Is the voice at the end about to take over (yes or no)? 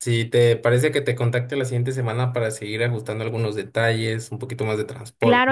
yes